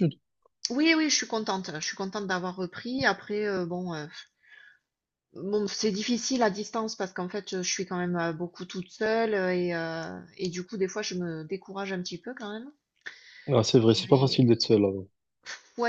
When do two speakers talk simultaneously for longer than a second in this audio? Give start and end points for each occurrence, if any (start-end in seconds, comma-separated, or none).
none